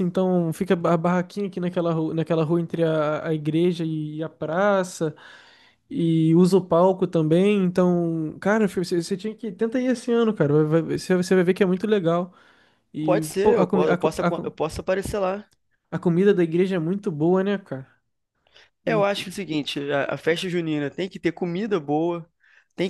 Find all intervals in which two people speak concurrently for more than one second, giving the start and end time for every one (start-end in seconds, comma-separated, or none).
13.0-14.6